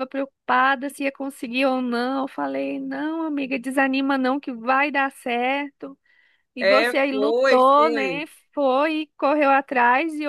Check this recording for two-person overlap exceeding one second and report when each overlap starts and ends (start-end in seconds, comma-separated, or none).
6.6-8.3